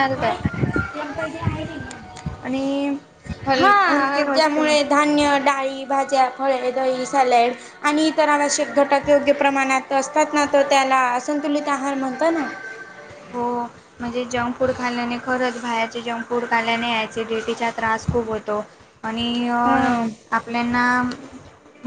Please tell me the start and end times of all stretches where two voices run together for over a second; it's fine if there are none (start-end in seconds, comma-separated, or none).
none